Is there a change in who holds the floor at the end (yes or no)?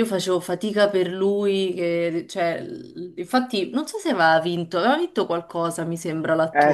yes